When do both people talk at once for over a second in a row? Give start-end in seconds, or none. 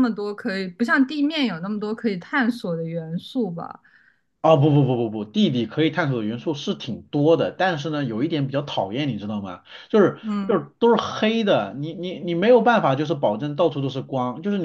none